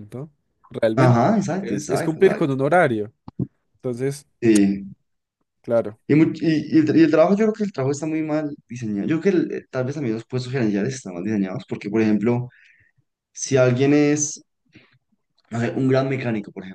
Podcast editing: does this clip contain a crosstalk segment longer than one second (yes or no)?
yes